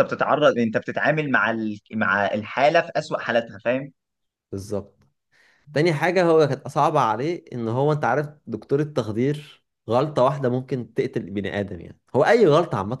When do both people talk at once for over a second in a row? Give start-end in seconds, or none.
none